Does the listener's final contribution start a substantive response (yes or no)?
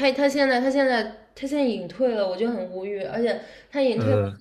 no